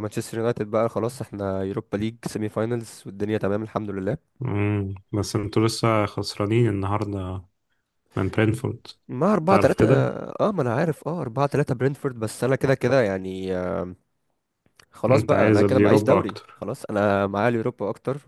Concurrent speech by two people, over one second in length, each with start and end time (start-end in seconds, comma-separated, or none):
15.1-16.6